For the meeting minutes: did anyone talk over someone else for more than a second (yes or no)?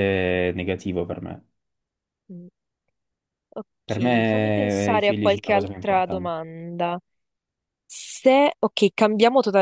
yes